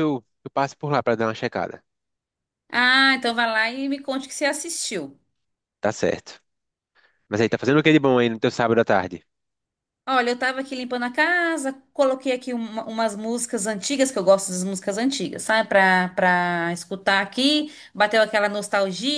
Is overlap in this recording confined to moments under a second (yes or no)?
yes